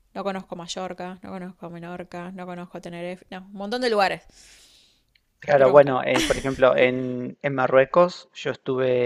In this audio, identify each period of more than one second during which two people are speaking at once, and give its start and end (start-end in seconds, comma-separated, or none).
none